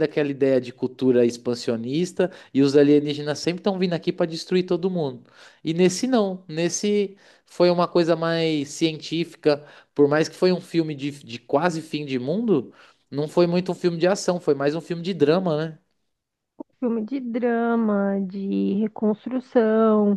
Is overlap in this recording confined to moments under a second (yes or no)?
yes